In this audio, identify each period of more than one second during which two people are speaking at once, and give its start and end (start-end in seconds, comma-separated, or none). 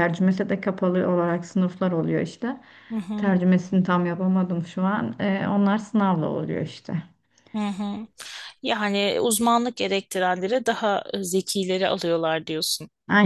none